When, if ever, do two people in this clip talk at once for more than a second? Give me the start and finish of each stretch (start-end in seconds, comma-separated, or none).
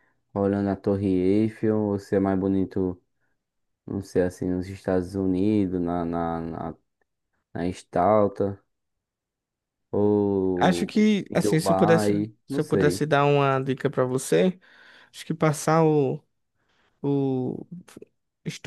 10.6-13.0